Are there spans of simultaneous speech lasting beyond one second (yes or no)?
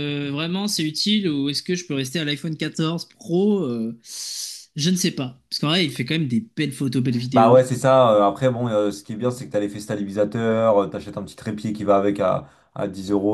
no